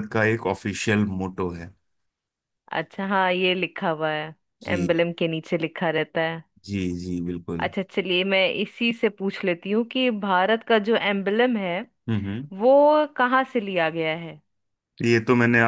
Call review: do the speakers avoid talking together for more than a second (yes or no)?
yes